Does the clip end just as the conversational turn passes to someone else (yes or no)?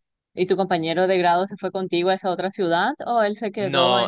no